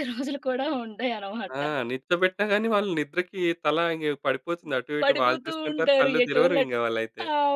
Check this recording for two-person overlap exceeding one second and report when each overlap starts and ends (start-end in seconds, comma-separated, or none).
5.0-6.8